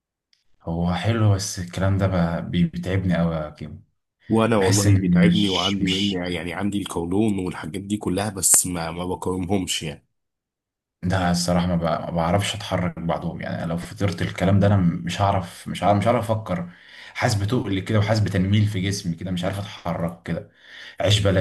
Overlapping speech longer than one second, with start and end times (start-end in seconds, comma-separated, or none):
4.6-6.2